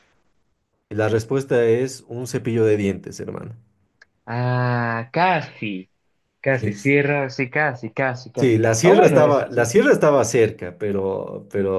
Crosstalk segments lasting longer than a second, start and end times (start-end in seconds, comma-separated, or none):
8.3-9.6